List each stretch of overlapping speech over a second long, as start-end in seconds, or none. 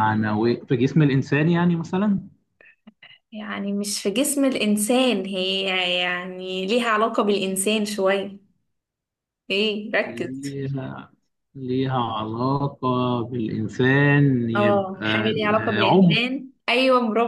14.6-16.2